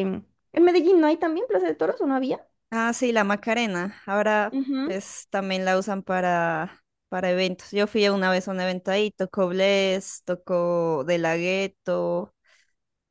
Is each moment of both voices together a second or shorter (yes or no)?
yes